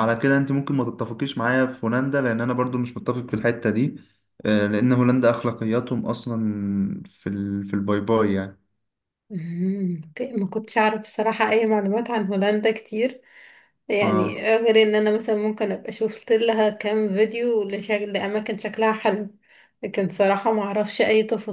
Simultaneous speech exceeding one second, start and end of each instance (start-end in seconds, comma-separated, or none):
none